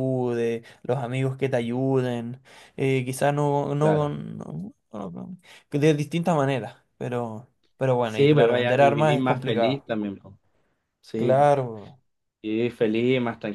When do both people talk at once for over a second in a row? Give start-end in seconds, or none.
8.0-9.9